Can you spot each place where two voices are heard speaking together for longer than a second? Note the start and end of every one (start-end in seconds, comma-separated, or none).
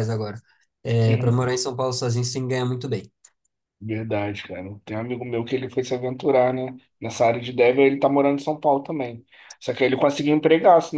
none